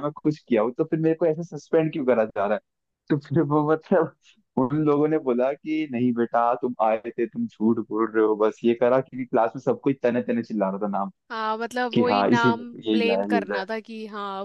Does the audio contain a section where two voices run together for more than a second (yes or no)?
yes